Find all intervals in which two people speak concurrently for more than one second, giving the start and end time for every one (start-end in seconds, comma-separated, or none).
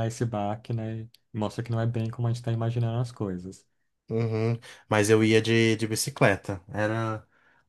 none